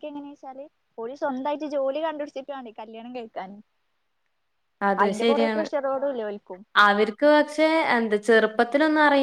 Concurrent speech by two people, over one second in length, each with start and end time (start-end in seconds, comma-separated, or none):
none